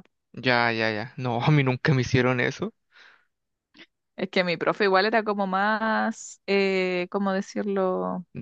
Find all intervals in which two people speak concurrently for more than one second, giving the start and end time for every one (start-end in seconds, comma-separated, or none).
none